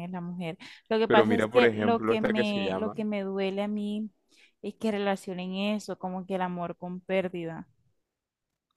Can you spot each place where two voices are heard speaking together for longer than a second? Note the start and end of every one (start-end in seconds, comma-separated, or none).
1.0-3.0